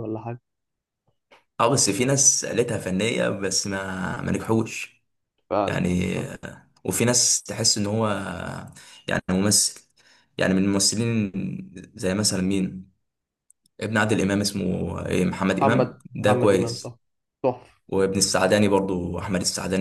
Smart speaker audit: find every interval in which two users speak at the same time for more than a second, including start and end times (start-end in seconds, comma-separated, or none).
15.5-16.9